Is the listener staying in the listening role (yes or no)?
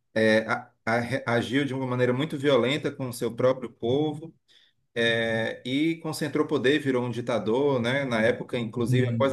yes